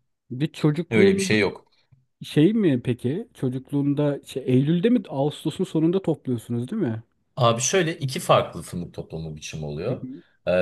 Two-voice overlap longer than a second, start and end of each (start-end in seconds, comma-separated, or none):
none